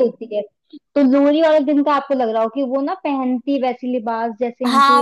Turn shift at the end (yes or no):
yes